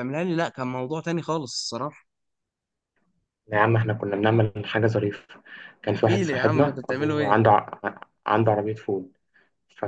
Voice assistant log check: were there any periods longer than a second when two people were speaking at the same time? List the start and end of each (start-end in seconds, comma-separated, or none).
5.9-7.4